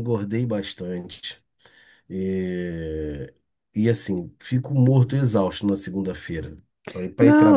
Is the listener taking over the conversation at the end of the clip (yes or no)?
yes